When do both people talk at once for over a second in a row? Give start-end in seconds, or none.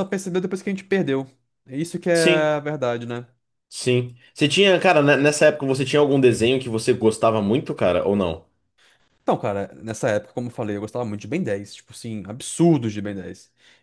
none